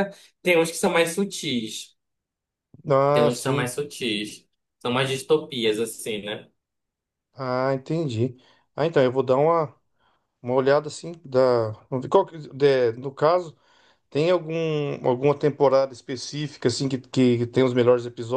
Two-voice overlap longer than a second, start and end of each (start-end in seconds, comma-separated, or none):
none